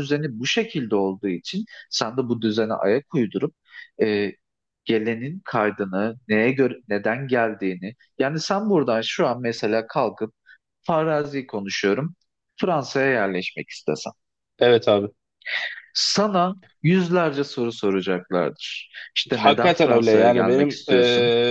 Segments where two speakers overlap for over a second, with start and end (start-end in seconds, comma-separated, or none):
19.4-20.8